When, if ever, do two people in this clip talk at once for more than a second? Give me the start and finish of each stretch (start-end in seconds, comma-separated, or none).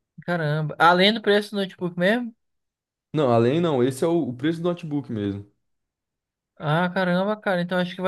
none